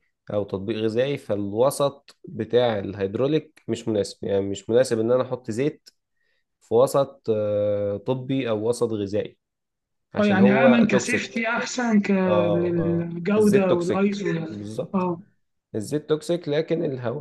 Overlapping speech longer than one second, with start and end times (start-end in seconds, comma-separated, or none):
10.2-11.4, 12.5-15.1